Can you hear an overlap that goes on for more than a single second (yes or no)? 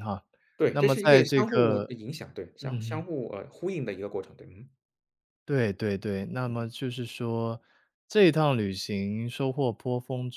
yes